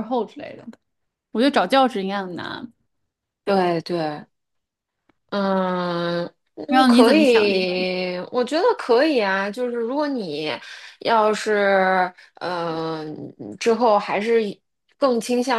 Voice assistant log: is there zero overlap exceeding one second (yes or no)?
no